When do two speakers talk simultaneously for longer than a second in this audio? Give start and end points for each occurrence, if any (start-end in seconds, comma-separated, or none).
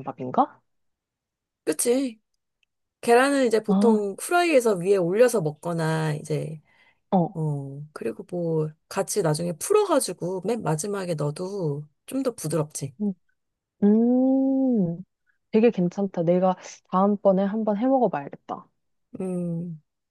none